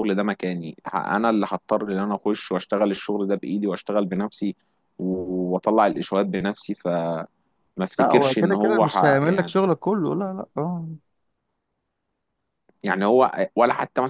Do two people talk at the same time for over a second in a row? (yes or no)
yes